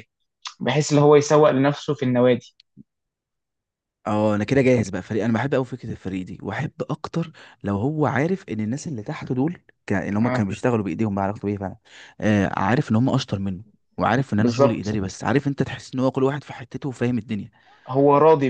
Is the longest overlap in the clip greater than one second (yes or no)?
no